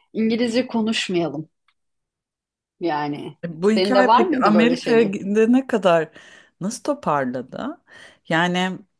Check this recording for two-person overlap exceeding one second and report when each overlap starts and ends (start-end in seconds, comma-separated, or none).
3.7-5.2